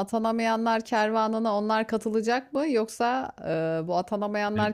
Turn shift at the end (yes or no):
no